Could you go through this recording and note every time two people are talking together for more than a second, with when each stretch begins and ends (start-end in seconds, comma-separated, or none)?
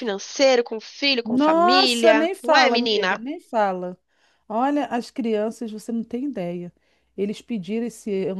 1.2-3.2